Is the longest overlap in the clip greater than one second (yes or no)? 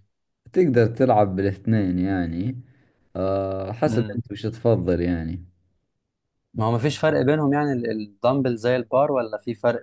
no